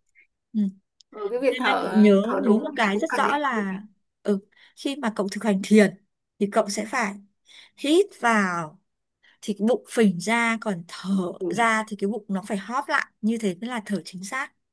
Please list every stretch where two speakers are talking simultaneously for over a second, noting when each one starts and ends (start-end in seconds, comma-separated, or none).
1.5-3.8